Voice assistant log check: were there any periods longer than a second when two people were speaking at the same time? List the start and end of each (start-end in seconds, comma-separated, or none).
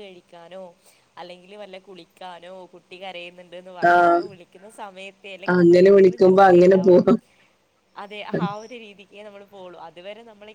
5.6-7.0